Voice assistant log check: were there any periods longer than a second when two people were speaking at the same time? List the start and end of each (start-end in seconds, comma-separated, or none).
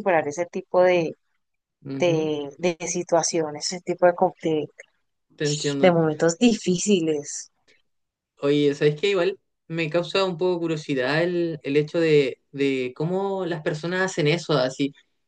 none